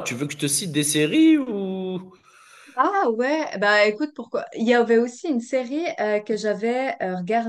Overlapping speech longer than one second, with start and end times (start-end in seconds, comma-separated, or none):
none